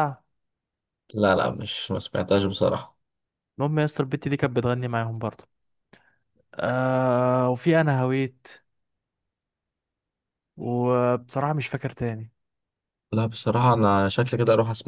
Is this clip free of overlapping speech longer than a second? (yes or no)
yes